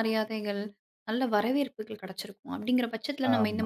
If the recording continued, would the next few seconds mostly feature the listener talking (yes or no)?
no